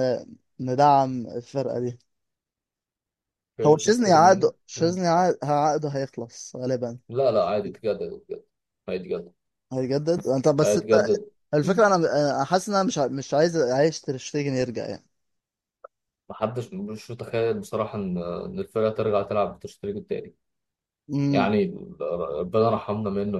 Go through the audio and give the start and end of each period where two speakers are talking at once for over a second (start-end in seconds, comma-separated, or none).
3.6-5.0